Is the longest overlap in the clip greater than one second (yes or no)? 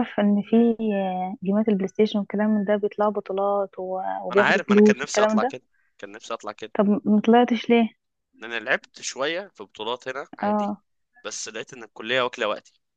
yes